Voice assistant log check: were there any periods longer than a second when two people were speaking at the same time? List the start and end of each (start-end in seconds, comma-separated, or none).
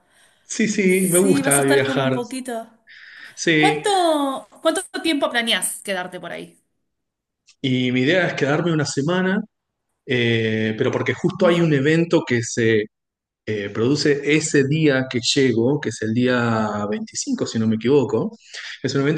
0.9-2.1